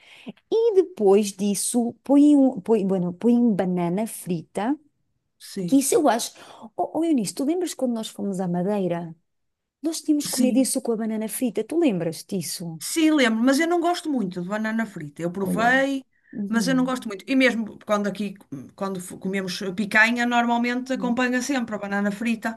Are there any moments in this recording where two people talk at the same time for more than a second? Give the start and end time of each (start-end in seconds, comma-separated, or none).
none